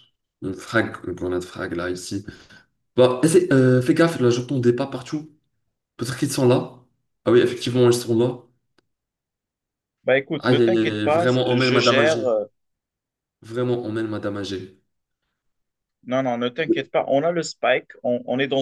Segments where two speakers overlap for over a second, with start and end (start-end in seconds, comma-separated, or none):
10.4-12.2